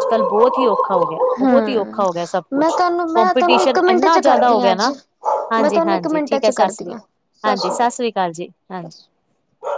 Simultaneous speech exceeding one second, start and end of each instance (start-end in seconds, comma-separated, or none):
2.6-4.9, 5.6-6.9